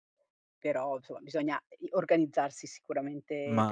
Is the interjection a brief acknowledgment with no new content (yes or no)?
no